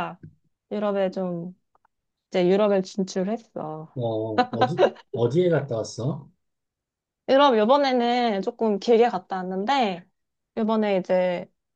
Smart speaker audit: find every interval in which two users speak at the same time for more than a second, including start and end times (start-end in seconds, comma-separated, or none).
none